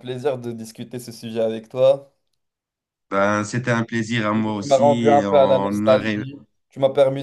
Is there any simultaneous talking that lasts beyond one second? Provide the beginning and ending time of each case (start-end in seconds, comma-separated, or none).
4.3-6.2